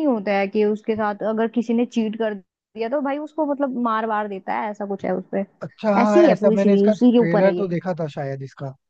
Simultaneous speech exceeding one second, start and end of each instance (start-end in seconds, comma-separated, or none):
6.0-7.7